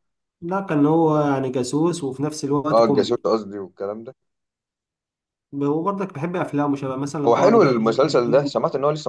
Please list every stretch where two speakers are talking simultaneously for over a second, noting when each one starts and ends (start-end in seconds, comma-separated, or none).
none